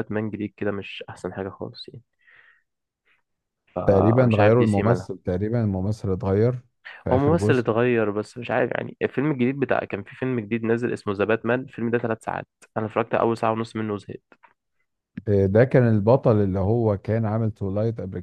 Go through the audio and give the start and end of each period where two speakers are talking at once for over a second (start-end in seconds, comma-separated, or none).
3.9-5.1